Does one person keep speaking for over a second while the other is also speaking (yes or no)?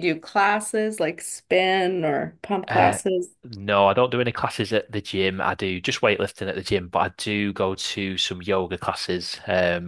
no